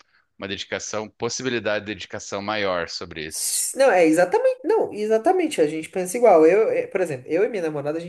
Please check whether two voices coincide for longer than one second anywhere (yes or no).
no